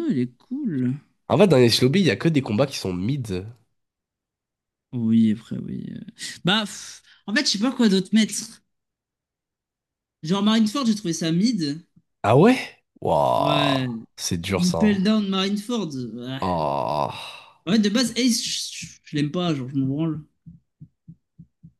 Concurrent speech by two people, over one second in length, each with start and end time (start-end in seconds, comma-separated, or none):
none